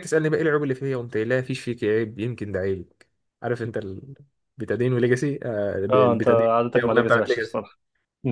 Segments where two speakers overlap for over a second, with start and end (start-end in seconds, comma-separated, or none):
5.9-7.6